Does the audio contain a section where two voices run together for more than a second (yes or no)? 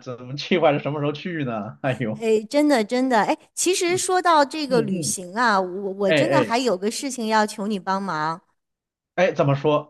no